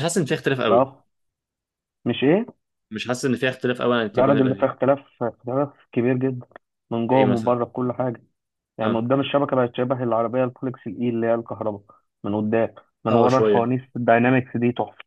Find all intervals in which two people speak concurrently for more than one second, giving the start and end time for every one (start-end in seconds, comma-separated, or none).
none